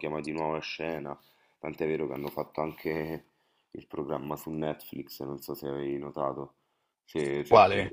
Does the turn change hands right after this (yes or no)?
no